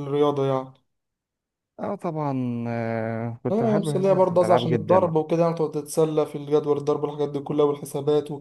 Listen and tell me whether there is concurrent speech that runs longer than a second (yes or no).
yes